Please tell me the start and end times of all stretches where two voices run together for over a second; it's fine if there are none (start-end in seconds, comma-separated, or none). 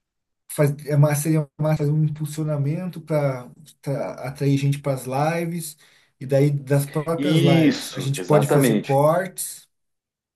7.1-9.0